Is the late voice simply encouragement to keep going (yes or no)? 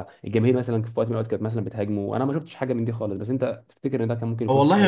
no